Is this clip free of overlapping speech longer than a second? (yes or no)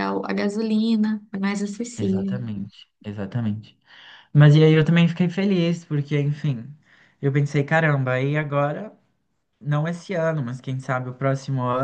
yes